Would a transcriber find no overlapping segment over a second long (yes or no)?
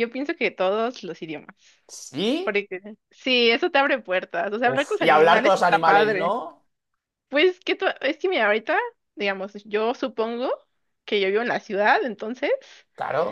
no